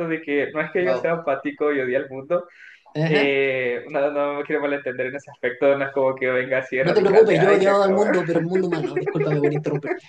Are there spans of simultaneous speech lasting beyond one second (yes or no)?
yes